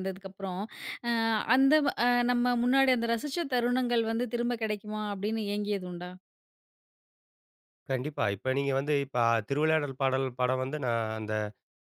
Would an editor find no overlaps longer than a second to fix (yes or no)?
yes